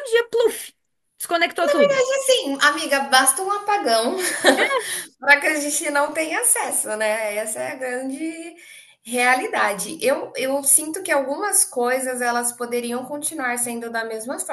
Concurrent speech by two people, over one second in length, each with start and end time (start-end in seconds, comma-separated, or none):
none